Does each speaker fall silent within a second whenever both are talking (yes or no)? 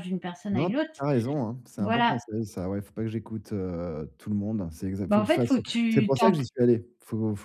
no